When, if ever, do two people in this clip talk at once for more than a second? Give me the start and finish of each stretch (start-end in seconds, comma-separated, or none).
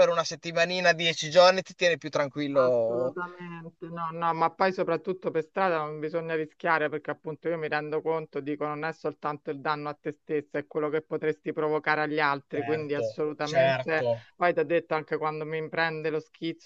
12.5-14.2